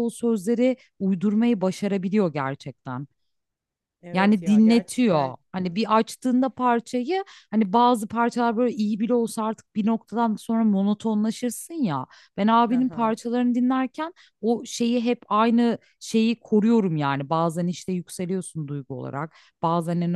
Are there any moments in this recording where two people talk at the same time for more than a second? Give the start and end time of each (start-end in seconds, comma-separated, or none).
4.1-5.3